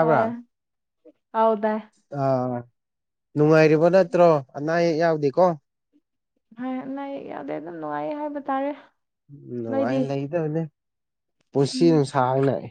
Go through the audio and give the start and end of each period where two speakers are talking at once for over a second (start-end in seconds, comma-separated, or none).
none